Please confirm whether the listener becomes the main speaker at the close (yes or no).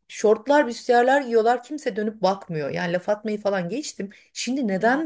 no